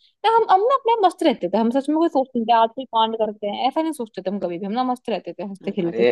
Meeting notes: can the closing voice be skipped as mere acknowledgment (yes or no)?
no